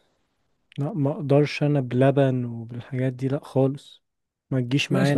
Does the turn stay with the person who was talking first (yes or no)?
no